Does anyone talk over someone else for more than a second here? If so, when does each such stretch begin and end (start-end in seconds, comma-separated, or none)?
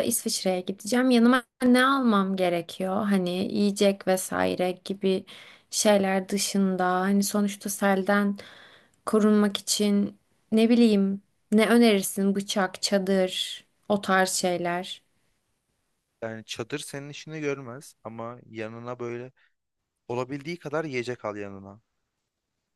none